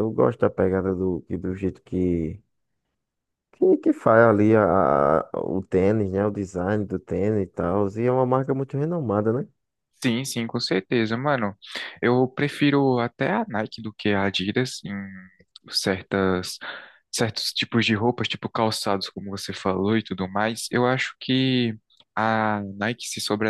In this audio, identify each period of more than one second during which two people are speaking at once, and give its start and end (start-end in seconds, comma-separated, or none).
none